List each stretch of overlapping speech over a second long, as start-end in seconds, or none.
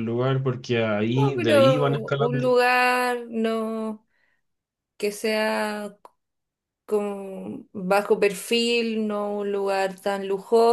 1.1-2.5